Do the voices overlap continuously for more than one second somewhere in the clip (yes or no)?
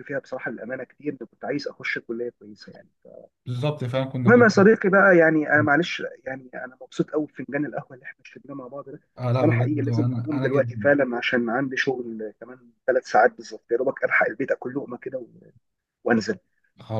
yes